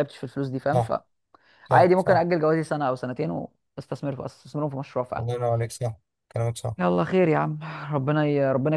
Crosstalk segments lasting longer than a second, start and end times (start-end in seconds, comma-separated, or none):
none